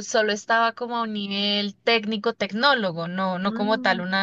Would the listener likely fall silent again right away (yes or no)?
yes